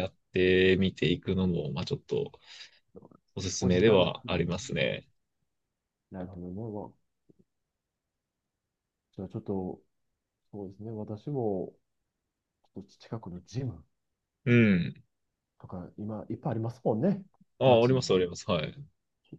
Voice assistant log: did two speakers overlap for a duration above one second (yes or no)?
yes